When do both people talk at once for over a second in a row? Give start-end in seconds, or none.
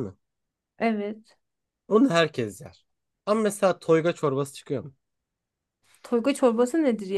none